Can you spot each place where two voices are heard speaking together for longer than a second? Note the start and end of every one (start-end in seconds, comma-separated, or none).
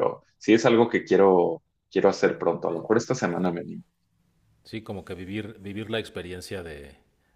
none